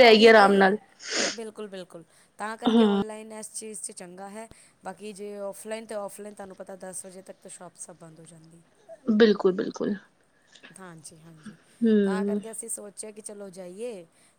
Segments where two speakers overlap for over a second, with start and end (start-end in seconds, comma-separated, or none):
none